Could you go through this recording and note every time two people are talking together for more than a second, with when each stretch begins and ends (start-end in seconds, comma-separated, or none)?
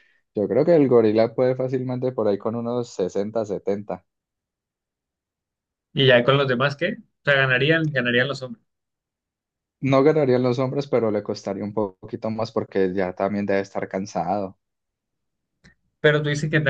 none